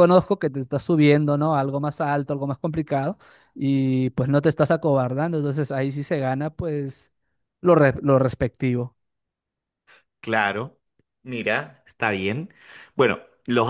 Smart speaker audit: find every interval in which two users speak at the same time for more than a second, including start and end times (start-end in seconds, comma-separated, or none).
none